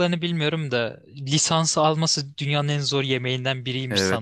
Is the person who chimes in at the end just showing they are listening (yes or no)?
no